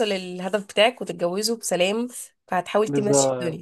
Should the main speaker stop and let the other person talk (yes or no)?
yes